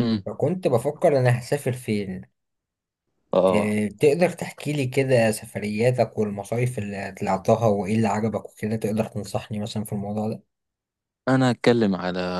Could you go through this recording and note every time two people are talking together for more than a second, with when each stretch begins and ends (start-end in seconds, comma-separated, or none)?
none